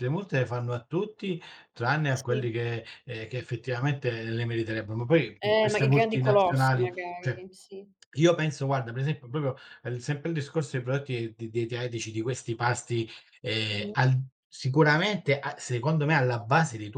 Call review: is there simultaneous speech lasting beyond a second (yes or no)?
yes